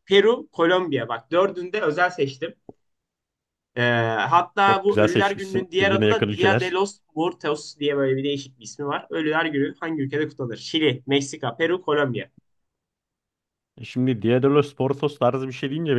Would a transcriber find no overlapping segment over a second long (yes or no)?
no